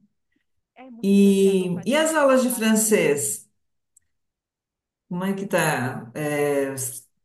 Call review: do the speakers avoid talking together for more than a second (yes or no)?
no